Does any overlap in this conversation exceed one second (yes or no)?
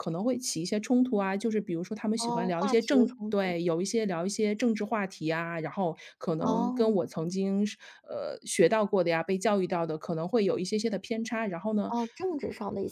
yes